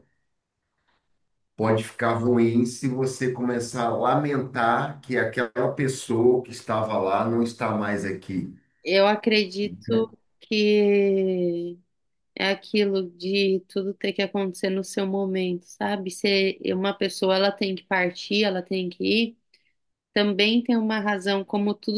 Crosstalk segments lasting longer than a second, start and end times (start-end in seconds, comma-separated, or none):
none